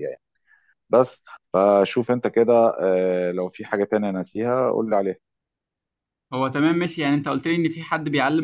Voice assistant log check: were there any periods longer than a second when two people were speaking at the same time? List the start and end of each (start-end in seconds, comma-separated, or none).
none